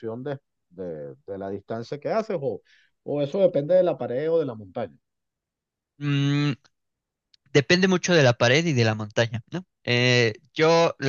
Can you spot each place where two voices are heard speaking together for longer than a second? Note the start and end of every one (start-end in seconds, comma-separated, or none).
none